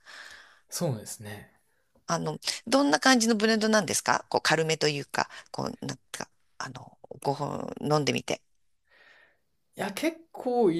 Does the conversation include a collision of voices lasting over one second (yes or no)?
no